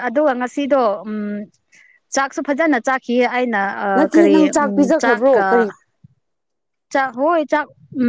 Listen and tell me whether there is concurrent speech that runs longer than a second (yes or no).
no